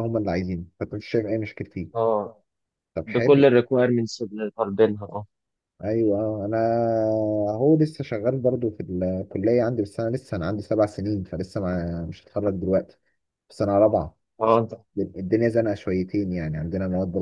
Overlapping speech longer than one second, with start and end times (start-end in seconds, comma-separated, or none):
none